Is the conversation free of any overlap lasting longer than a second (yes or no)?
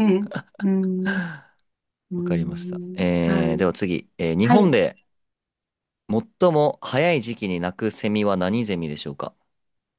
no